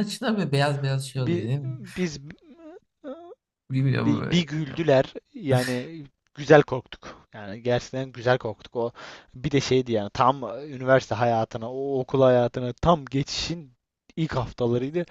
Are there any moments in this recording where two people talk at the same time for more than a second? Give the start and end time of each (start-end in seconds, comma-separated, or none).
none